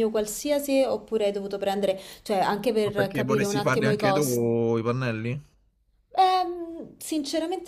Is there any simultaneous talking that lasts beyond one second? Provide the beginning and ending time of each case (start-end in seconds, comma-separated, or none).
2.8-4.5